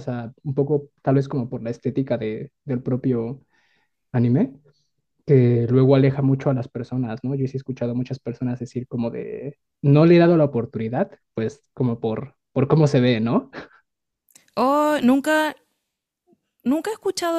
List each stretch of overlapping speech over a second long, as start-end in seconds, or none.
none